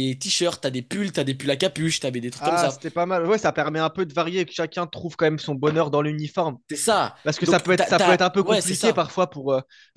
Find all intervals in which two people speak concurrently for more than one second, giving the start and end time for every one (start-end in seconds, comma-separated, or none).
7.2-9.1